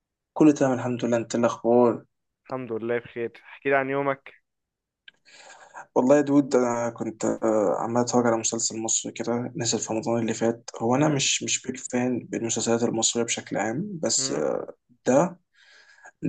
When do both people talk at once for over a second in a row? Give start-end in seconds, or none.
none